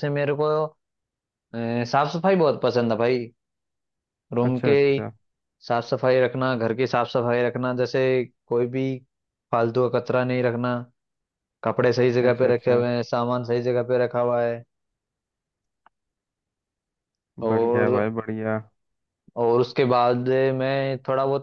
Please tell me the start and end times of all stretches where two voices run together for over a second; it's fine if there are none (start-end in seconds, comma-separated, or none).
none